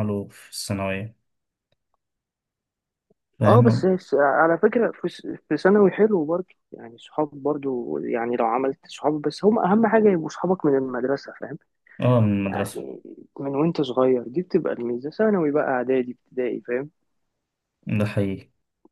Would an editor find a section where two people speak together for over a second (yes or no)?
no